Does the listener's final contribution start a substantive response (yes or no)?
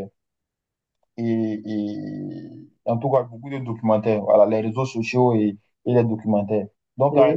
no